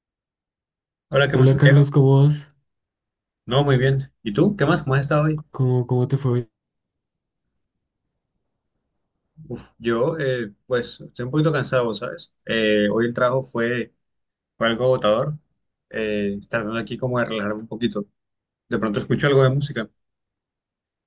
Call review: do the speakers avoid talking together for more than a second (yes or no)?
yes